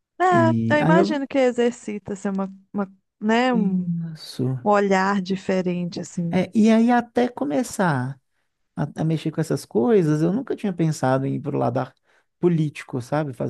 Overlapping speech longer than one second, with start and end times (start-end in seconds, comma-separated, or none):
none